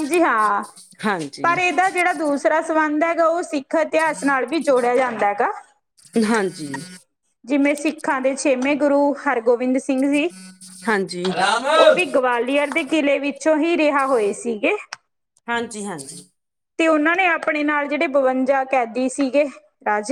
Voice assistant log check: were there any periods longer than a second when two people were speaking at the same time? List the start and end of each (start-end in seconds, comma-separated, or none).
none